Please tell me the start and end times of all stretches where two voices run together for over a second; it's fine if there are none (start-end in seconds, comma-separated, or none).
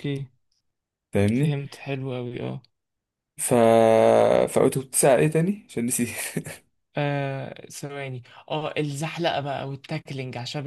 none